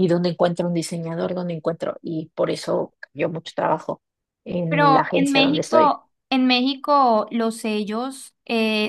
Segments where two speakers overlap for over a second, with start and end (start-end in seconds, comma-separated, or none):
4.7-6.0